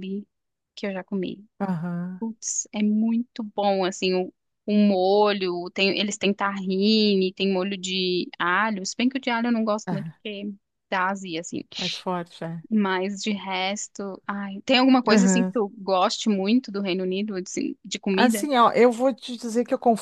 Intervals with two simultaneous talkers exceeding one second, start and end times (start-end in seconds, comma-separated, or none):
none